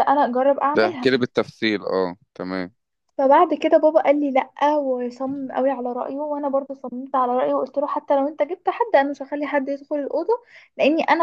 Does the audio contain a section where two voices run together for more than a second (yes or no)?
no